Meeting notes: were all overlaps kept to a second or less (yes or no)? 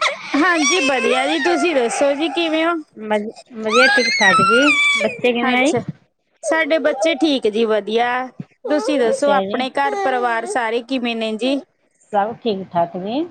yes